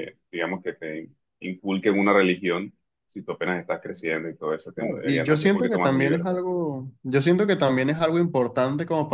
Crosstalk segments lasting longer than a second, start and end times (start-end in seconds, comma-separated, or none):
5.0-6.4